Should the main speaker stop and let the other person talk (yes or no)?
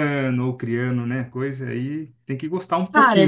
yes